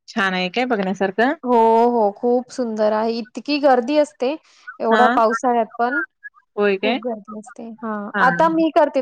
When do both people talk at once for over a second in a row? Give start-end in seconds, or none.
none